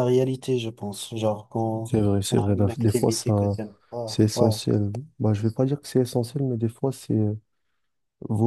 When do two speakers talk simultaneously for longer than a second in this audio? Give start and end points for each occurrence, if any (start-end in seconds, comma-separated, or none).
1.8-3.3